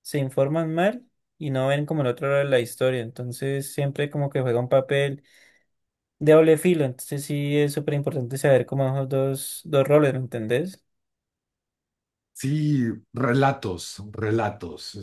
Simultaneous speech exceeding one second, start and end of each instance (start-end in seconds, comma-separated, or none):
none